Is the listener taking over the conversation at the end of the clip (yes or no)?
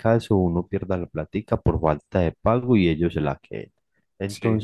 no